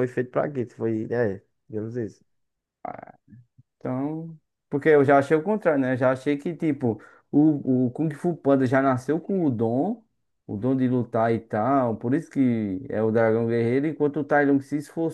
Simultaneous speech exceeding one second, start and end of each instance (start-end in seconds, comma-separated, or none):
none